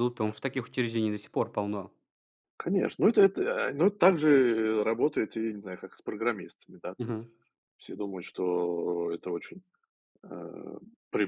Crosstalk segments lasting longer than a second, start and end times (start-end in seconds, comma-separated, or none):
none